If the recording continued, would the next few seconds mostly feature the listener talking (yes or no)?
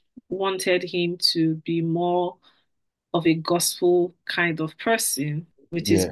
no